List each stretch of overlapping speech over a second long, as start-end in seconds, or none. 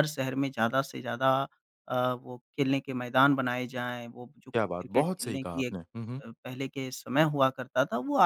4.5-5.8